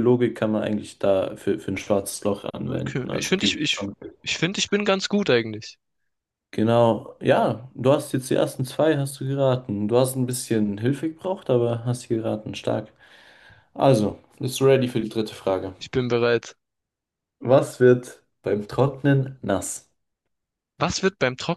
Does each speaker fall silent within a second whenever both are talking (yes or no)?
no